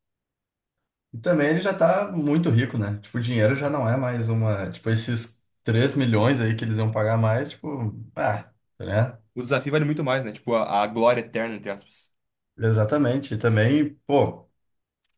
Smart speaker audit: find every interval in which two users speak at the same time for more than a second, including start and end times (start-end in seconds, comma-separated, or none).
none